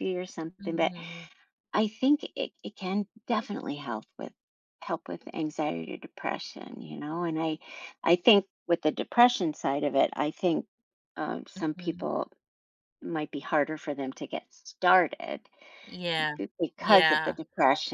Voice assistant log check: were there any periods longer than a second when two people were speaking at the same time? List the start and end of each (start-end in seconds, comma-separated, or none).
none